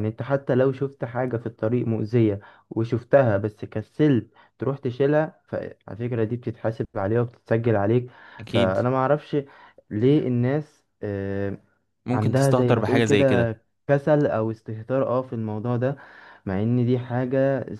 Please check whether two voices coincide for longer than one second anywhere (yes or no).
yes